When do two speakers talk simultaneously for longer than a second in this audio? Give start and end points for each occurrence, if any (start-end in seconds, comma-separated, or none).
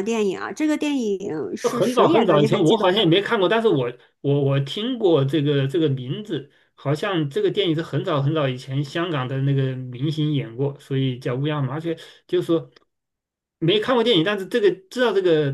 1.6-2.9